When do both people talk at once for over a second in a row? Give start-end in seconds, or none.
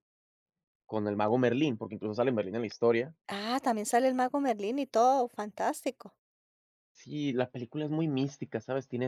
none